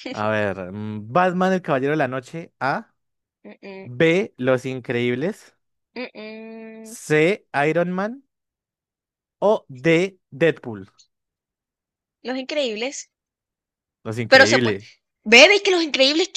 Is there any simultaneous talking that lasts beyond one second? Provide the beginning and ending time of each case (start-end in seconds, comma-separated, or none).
none